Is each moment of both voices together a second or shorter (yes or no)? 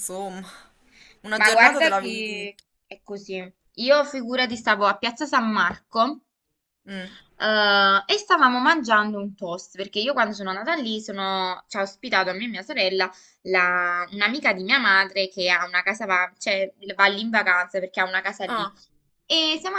no